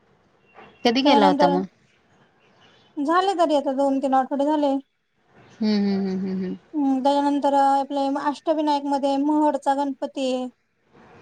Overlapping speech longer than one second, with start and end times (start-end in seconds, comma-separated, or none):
none